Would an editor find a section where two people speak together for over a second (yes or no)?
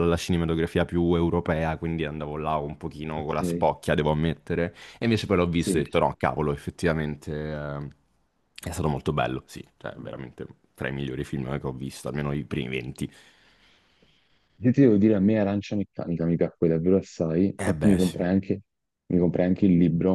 no